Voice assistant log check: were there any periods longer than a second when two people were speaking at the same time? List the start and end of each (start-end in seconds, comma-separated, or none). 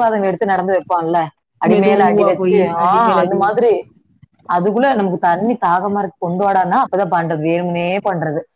1.7-3.7